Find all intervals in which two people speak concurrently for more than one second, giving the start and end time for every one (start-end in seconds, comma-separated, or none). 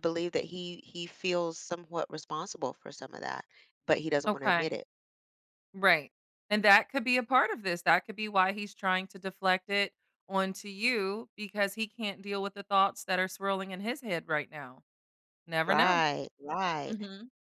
none